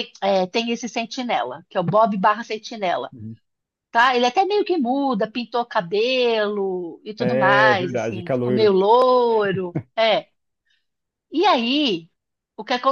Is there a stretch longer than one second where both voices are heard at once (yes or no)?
yes